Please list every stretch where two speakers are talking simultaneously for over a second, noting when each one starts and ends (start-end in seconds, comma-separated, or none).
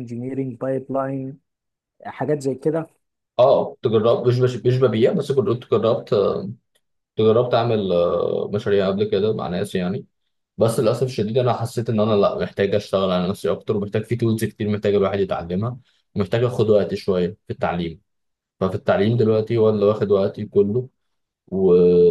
none